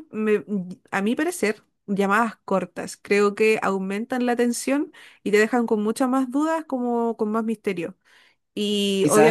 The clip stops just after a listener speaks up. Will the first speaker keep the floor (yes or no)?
no